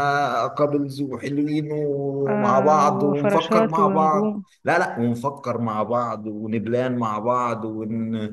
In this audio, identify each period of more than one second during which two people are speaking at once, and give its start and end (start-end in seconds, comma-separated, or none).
2.3-4.3